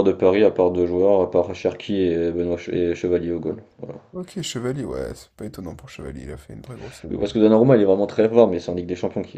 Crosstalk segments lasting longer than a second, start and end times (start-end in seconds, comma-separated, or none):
none